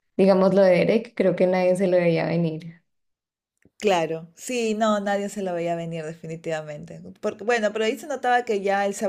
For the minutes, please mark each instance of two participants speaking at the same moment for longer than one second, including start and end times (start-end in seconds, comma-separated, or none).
none